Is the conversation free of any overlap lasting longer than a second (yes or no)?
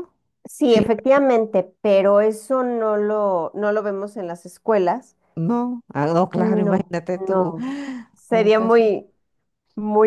no